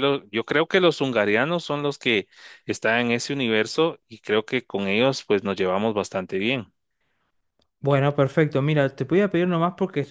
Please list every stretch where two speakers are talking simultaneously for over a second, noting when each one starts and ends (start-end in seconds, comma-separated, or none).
none